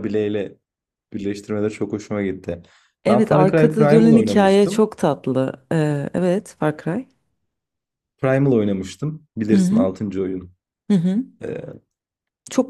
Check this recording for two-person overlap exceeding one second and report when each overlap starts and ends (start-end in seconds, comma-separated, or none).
3.1-4.9